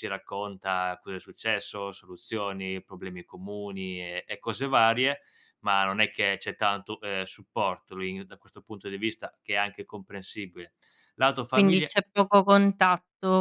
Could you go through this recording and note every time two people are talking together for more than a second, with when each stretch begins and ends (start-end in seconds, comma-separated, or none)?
none